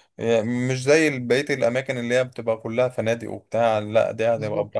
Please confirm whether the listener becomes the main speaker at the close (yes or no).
yes